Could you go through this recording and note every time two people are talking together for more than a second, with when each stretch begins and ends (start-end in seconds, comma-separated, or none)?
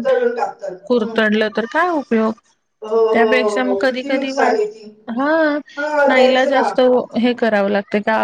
3.1-4.6